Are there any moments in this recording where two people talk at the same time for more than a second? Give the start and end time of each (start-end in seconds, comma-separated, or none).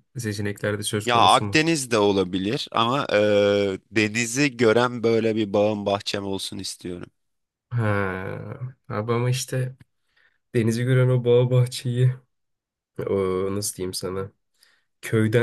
none